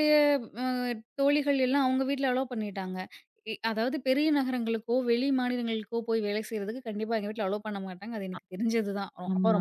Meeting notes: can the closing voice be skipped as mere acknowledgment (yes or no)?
no